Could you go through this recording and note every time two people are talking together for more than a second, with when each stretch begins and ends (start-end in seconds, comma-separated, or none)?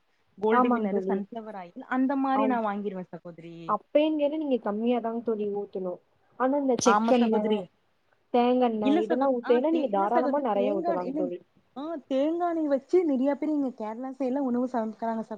8.9-11.3